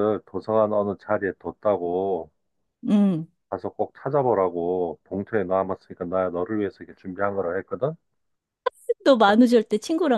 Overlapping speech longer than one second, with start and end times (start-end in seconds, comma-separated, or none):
none